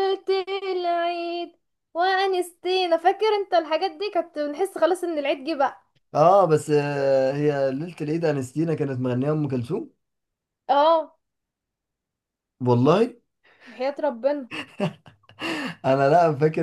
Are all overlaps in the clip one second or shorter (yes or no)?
yes